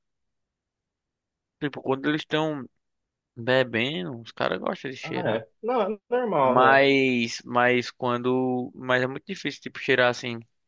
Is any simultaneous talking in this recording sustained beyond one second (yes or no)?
no